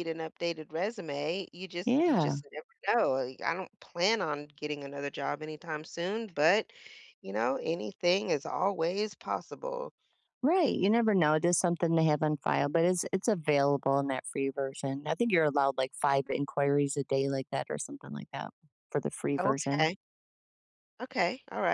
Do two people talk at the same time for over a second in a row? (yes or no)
no